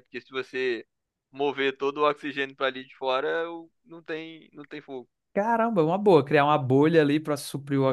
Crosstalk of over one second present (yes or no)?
no